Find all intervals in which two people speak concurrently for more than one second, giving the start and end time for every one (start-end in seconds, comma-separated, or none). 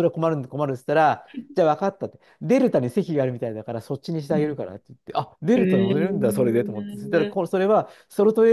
5.5-7.4